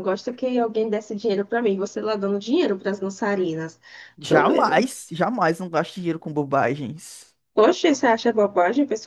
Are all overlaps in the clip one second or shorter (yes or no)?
yes